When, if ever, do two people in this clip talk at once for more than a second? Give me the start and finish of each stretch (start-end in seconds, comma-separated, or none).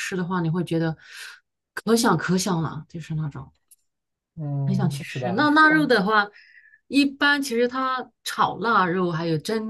4.7-5.9